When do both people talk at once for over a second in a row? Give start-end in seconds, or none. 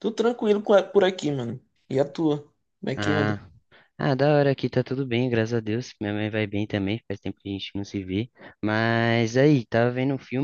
none